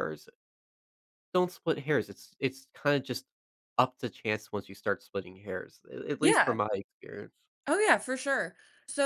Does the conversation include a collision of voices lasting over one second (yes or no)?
no